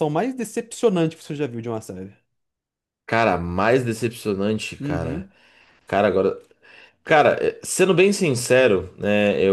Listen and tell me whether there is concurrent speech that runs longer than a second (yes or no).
no